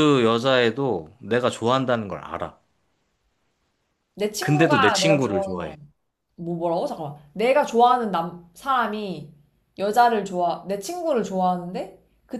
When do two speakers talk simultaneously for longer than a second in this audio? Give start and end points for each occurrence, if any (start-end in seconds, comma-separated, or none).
4.4-5.7